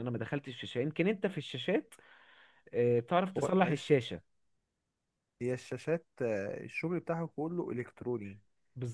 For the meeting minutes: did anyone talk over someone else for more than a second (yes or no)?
no